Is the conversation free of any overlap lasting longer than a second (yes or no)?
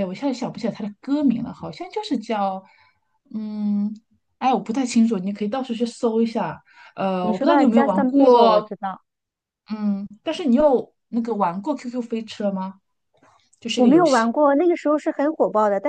no